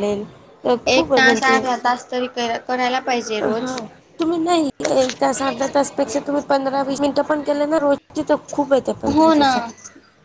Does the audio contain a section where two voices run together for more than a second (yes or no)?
no